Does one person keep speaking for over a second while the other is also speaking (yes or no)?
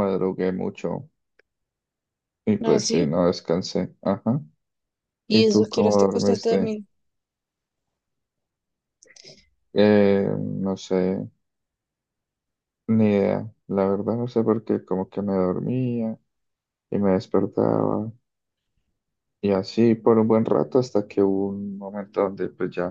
yes